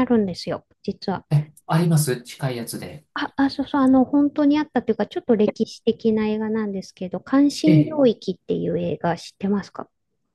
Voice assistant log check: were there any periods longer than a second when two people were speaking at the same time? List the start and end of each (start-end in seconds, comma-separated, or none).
none